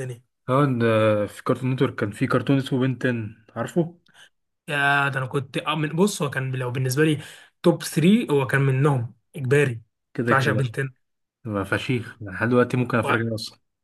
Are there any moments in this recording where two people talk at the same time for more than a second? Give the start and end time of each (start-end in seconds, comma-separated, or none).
none